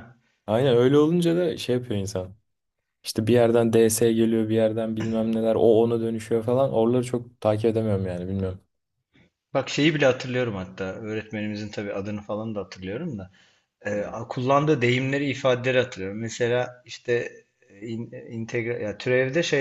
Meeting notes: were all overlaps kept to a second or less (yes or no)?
yes